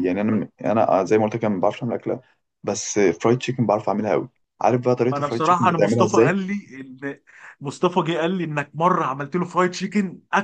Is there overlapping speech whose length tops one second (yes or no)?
yes